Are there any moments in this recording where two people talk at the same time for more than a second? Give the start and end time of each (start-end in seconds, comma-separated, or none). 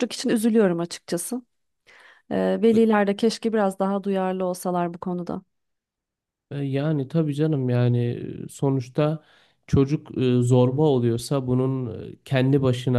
none